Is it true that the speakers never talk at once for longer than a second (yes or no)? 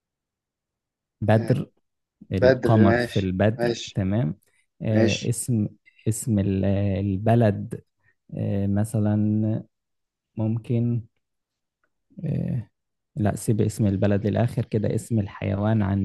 no